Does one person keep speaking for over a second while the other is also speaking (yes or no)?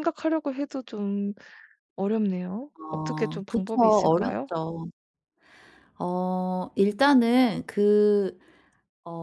yes